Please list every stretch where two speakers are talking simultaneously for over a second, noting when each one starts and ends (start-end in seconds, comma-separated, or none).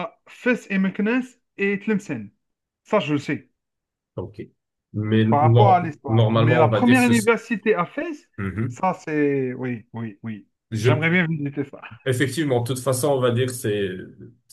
5.3-7.1